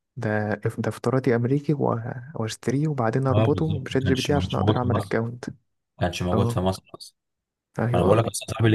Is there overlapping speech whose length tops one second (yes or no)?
yes